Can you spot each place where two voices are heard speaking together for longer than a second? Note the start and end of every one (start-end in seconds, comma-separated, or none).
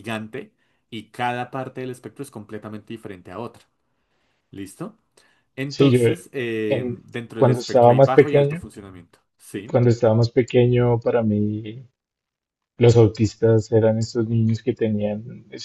6.7-8.6